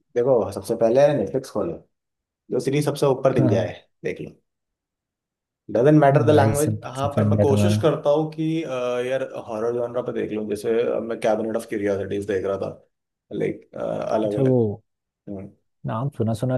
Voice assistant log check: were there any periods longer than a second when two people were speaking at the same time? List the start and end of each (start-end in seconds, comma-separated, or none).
6.1-7.8